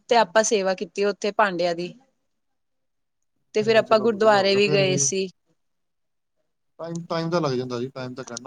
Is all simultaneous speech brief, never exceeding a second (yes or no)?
no